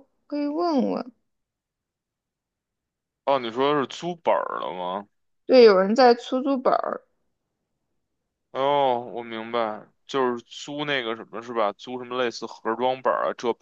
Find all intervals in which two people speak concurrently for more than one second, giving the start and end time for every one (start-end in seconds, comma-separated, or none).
none